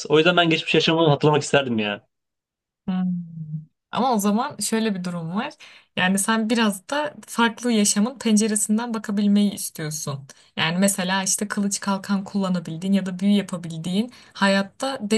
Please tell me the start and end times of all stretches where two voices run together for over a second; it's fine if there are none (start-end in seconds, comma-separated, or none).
none